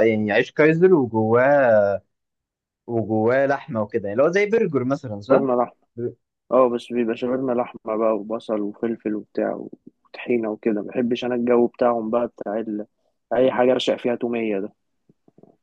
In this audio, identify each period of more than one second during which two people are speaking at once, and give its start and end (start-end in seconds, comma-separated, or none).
none